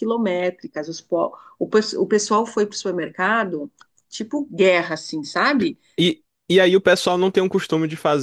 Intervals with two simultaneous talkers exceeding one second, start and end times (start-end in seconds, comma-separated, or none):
none